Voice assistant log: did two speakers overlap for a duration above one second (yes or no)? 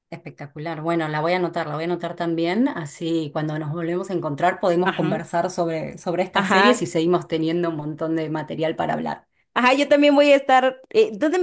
no